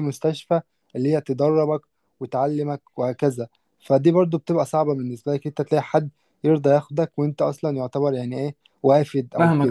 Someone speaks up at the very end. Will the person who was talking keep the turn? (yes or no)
no